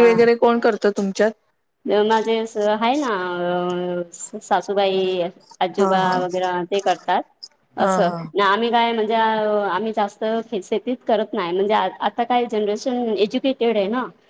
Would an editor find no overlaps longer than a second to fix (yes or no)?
yes